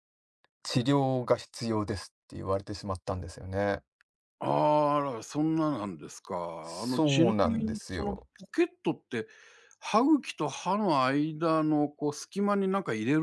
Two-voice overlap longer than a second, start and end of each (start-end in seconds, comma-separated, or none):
6.6-8.3